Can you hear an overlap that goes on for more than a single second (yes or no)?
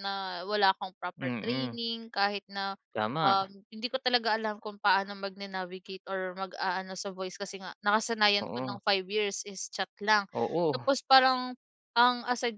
no